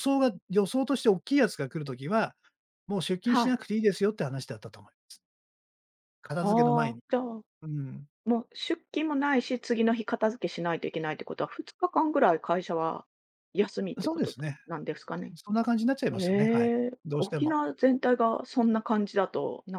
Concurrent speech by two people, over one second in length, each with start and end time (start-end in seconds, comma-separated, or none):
16.2-17.6